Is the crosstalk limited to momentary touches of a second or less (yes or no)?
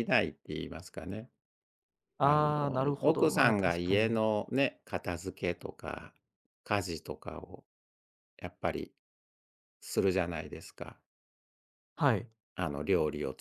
no